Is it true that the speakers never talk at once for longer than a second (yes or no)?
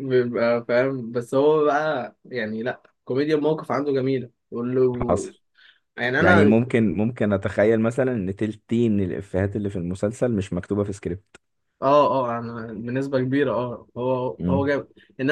yes